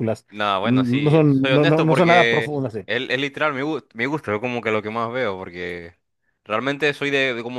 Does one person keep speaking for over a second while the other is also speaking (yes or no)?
yes